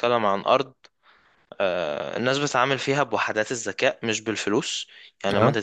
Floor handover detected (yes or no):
no